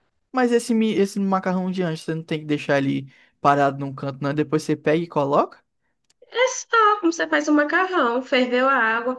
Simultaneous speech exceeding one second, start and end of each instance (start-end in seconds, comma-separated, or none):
none